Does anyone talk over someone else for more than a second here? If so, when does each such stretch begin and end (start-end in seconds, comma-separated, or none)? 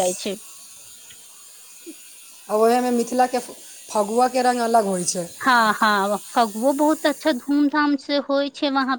none